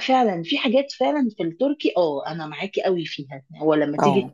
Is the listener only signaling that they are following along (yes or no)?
yes